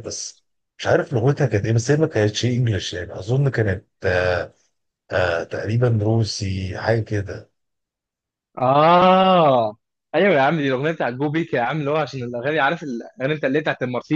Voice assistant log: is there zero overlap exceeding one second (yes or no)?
yes